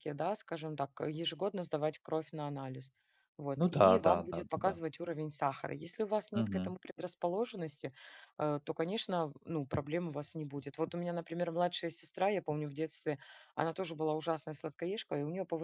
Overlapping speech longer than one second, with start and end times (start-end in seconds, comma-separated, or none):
3.6-4.8